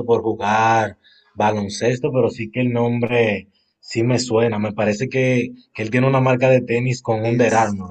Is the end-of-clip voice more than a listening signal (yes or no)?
yes